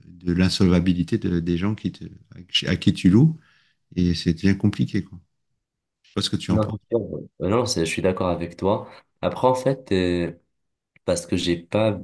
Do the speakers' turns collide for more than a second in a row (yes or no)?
no